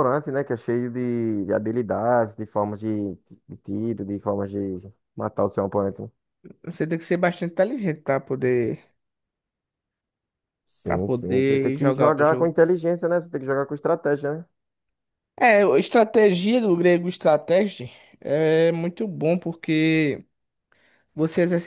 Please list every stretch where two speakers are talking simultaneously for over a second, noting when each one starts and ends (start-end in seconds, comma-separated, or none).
10.8-12.5